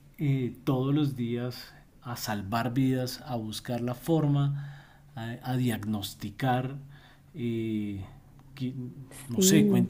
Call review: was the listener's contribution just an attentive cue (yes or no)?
yes